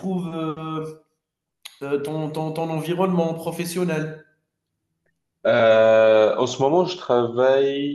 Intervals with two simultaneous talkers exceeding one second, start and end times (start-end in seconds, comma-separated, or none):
none